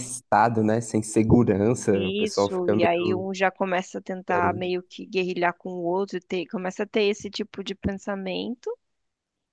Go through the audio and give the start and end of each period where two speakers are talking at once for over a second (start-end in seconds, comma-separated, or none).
1.9-3.2